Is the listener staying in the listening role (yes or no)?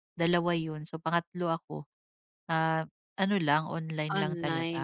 no